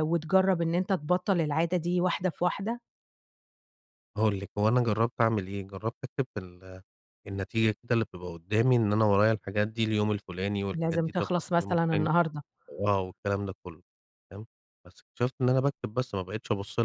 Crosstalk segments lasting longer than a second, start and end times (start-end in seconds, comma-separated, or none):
10.7-12.1